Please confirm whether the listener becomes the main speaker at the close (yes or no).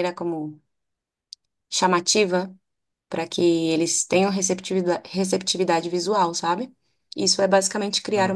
yes